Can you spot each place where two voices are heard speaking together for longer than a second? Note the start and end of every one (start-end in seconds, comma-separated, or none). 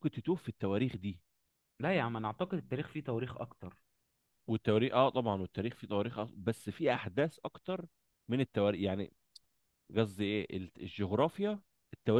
none